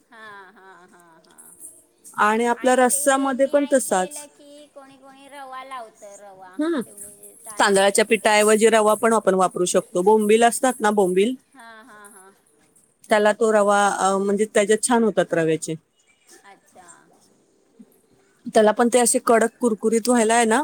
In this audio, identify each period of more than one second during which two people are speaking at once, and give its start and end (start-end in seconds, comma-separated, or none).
2.6-4.2